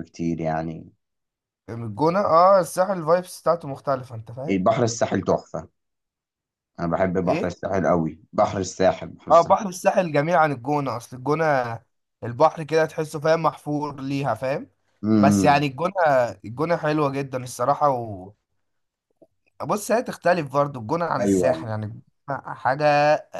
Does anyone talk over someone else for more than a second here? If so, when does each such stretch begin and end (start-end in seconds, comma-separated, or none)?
none